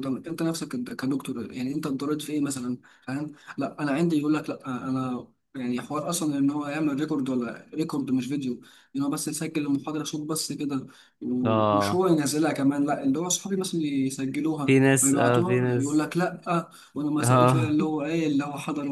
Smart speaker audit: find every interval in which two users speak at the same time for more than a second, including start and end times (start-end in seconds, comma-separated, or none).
14.7-16.0